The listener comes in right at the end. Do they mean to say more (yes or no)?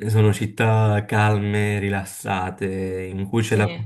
no